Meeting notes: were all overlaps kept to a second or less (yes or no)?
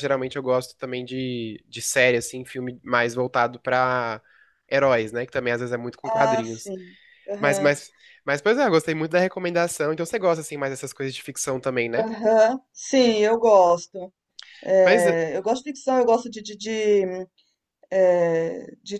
yes